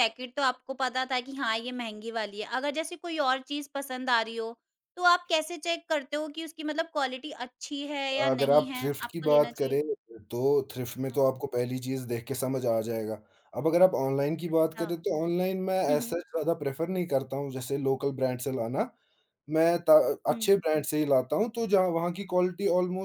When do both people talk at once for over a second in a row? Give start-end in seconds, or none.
8.3-9.8